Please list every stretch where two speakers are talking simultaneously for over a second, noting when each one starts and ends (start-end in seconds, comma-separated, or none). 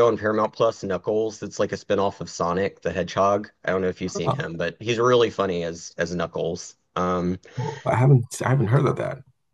none